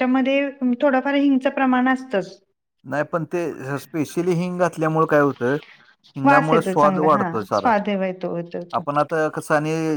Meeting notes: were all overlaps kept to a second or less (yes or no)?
no